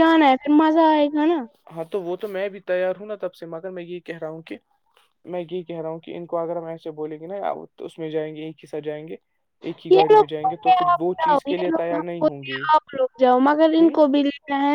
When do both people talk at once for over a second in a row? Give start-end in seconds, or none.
9.9-12.5